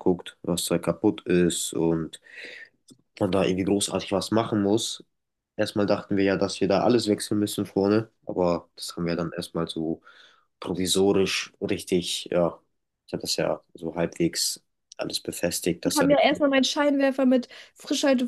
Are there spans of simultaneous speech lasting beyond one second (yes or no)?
no